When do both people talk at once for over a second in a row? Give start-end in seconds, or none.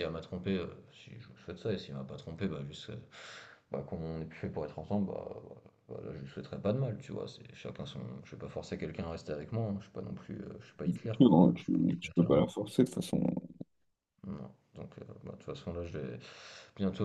11.0-12.4